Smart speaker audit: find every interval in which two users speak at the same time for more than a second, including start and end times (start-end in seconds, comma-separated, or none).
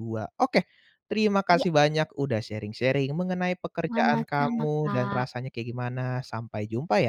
3.9-5.2